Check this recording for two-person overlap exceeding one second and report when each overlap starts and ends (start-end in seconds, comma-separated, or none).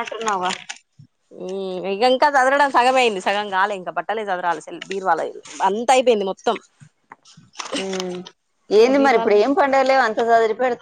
none